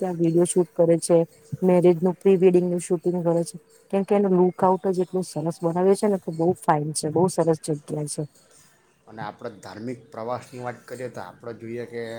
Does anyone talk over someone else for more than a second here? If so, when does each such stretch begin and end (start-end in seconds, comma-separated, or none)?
none